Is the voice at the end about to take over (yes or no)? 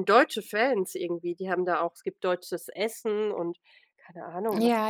yes